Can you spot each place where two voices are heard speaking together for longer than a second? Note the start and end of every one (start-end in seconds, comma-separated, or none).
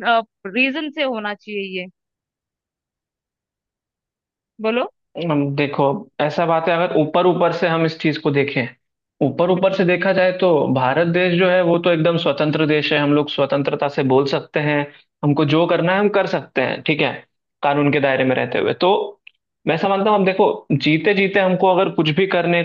none